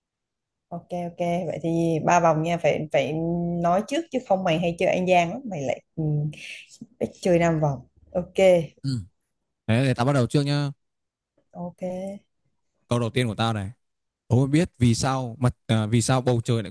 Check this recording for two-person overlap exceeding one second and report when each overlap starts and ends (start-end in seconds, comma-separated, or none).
none